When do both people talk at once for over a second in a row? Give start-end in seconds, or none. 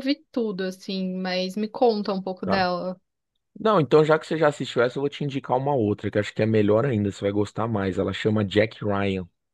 none